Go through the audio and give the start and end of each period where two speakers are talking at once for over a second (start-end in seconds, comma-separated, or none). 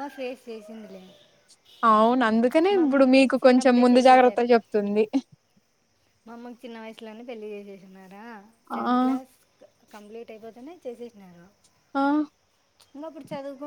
2.8-4.4